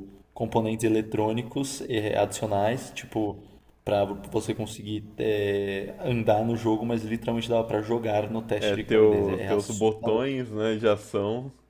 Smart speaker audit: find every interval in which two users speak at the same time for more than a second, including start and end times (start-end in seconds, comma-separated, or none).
8.6-10.2